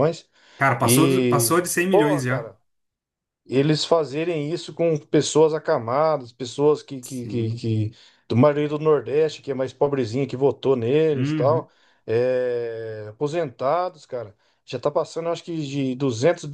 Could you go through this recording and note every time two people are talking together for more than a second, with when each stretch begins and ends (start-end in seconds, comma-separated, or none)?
0.8-2.5